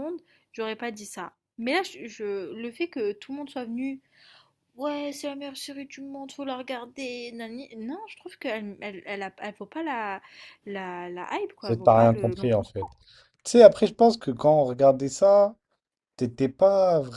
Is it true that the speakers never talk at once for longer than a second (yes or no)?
no